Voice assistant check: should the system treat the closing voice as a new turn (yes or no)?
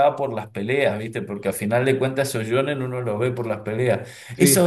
no